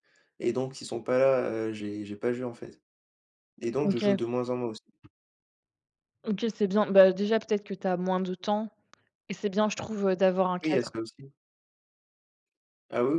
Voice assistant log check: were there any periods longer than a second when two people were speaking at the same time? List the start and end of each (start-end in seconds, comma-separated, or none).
none